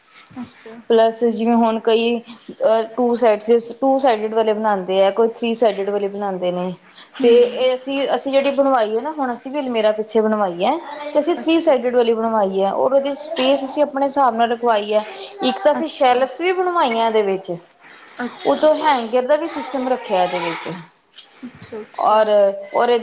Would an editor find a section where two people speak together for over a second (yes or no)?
no